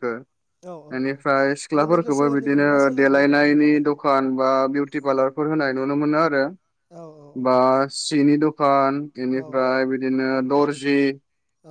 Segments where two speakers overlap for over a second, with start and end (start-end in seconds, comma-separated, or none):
1.7-3.8